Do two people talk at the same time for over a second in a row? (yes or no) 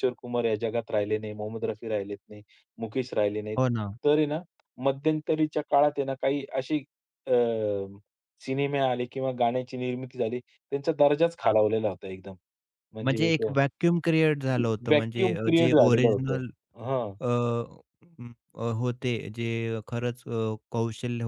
yes